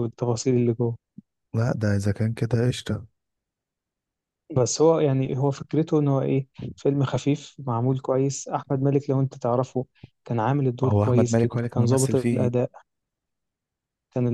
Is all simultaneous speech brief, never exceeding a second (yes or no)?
no